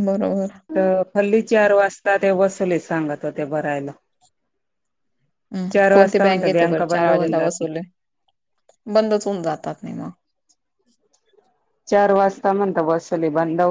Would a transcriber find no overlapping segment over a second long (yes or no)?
no